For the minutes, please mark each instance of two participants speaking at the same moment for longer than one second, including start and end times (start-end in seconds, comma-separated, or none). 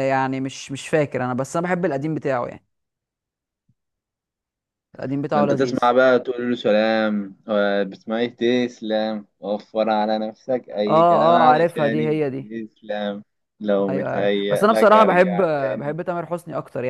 10.9-12.2, 13.9-16.0